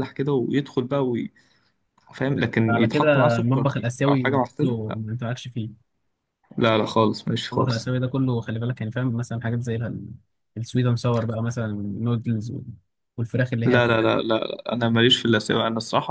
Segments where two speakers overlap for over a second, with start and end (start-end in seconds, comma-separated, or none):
2.7-5.0